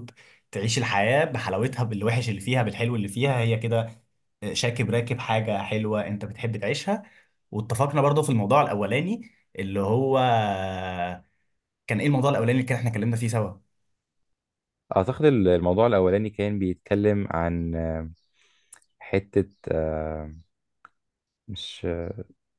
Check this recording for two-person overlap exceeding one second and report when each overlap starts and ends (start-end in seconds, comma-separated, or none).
none